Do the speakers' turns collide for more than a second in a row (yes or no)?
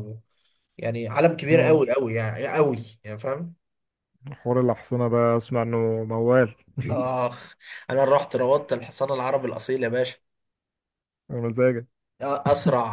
no